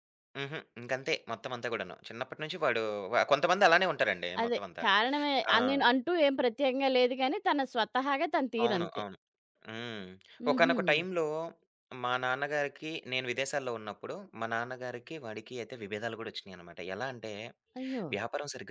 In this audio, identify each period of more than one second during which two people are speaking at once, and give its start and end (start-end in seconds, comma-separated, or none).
none